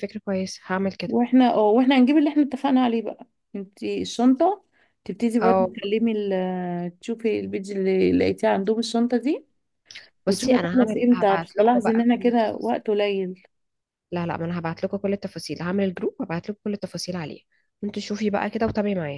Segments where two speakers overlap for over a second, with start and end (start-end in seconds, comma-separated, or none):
10.3-12.7